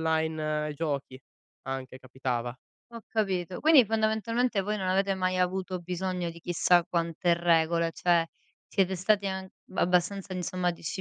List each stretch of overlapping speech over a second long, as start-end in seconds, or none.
none